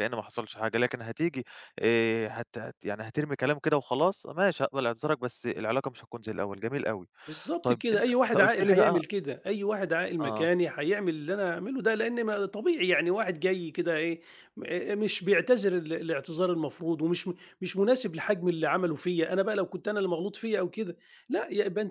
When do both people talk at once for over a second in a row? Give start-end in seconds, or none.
7.6-9.0